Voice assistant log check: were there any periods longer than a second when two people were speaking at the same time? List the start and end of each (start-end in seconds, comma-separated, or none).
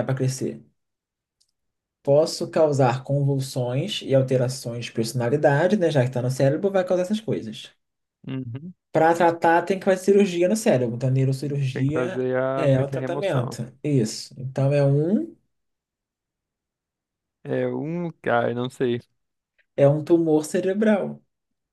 11.7-13.6